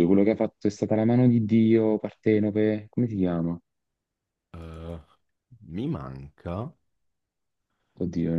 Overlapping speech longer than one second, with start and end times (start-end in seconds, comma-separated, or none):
none